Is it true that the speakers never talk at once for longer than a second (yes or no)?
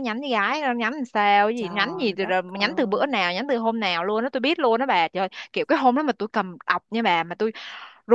no